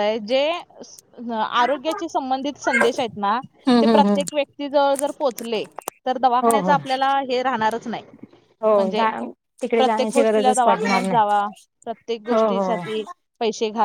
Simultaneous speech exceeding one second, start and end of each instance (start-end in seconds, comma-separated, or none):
9.8-11.3